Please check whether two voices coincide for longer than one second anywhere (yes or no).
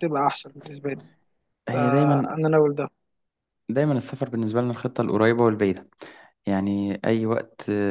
no